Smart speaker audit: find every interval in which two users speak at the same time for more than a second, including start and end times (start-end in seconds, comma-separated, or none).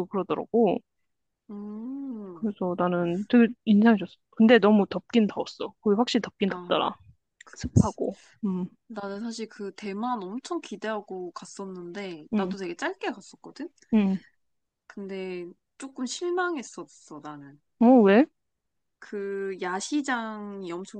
none